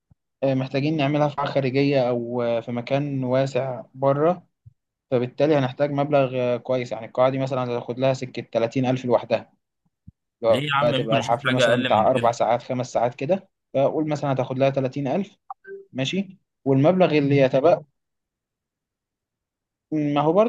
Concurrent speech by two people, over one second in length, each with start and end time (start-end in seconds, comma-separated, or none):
10.5-12.4